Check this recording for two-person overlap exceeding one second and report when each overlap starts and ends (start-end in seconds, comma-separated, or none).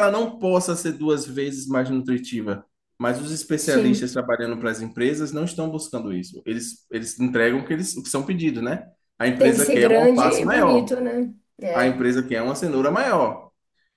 9.3-11.0